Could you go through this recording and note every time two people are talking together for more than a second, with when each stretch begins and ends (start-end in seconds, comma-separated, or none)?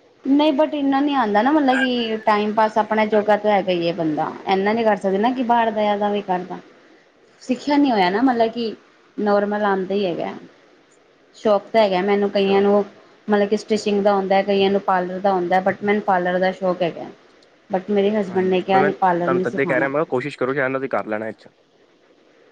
18.3-19.9